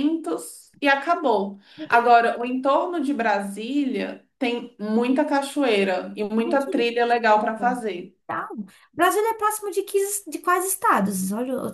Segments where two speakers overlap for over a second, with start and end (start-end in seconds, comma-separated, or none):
none